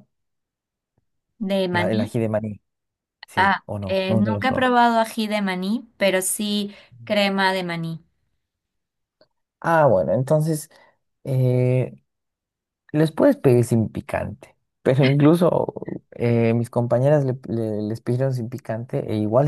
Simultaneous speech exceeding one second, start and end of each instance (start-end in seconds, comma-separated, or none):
3.4-4.7